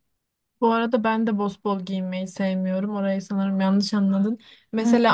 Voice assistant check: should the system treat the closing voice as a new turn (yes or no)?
no